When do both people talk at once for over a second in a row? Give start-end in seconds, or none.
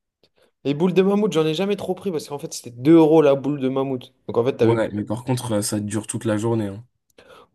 none